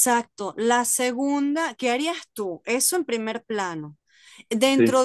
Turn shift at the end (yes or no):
no